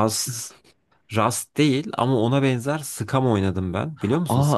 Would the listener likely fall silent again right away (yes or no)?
no